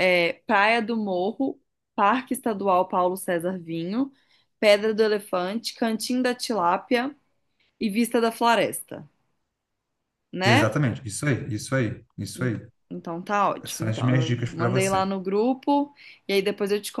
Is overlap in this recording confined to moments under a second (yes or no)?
no